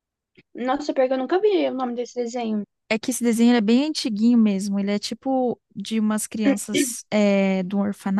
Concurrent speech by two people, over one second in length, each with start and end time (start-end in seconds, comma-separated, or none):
none